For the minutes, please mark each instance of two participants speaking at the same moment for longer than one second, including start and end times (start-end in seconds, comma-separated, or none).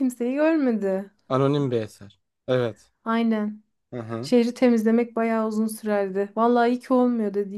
none